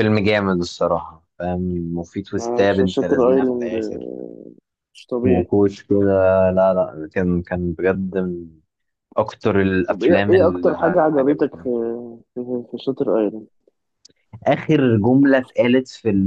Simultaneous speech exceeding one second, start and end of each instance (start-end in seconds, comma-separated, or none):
2.4-4.1, 9.9-11.7